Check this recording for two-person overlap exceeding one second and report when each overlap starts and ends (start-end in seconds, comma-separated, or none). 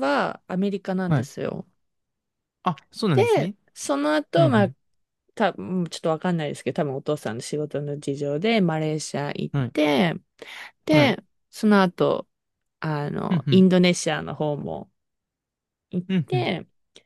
none